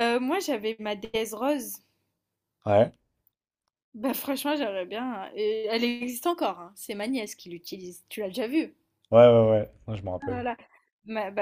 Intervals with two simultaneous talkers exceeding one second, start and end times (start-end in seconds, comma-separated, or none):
none